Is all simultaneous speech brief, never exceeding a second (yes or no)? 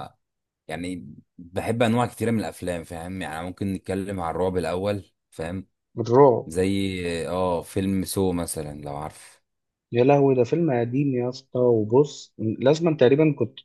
yes